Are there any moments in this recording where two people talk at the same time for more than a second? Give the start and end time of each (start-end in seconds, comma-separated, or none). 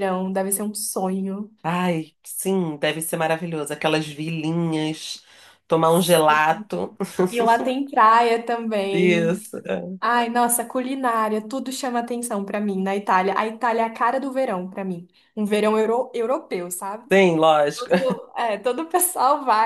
none